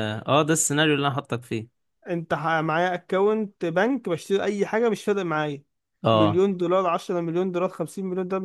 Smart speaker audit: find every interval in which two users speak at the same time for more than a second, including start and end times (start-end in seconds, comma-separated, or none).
none